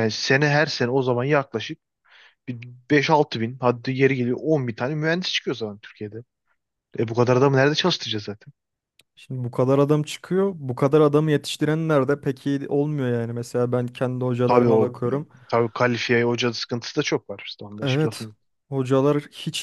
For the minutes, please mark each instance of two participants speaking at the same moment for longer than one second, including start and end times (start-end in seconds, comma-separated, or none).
none